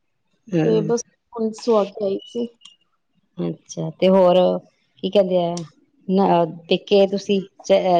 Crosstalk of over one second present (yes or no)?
no